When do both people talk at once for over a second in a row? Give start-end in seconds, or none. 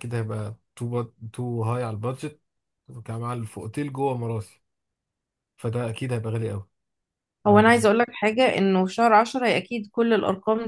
none